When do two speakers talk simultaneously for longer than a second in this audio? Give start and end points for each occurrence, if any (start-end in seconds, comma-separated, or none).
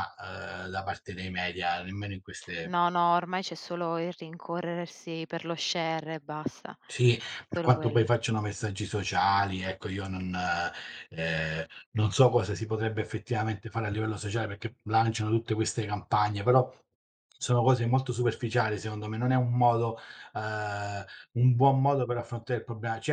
none